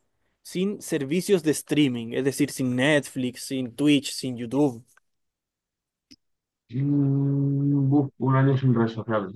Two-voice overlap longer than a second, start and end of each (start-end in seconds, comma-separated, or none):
none